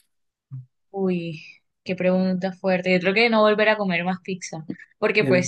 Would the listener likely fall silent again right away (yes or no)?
yes